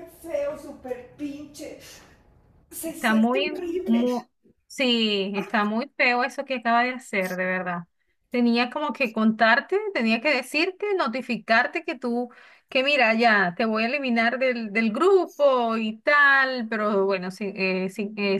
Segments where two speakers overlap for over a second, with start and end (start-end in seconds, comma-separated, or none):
2.8-4.0